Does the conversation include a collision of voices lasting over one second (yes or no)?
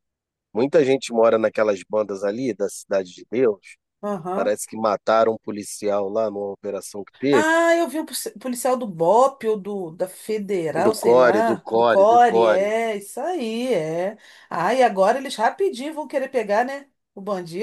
yes